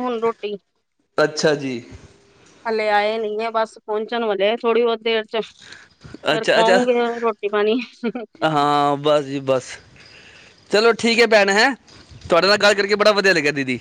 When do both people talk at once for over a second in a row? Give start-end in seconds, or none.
none